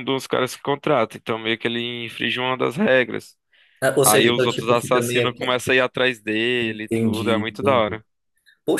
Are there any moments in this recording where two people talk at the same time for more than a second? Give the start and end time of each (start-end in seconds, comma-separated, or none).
4.0-5.4, 6.6-8.0